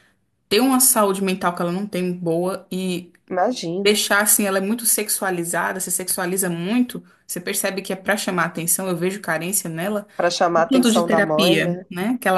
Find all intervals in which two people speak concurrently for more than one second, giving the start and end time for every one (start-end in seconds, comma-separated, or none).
10.5-11.9